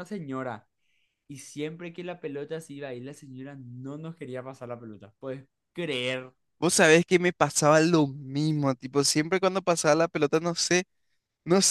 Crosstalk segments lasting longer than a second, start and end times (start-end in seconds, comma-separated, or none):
none